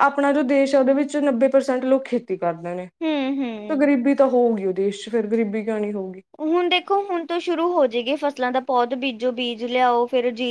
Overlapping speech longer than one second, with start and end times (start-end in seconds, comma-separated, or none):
none